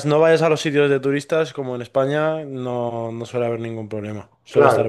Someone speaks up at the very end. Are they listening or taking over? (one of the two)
taking over